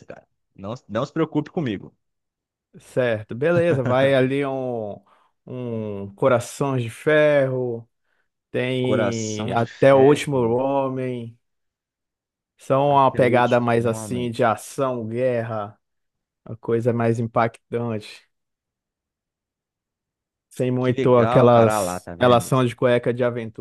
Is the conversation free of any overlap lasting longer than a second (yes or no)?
no